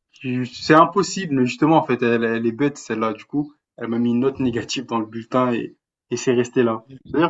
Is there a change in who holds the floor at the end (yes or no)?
no